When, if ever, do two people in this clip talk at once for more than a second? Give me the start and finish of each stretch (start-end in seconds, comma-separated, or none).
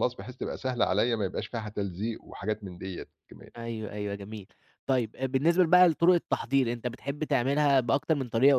none